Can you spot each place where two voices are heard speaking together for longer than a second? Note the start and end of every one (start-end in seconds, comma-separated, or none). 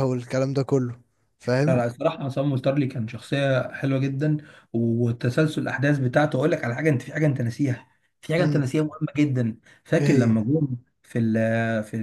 none